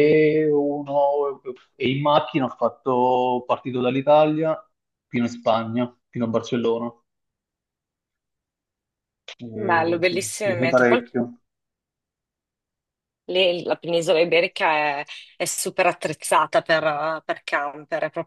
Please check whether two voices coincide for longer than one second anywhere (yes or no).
yes